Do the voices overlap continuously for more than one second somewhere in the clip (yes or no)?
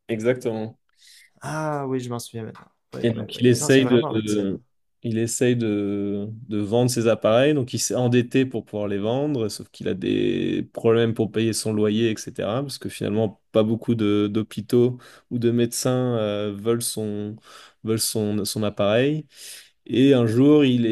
yes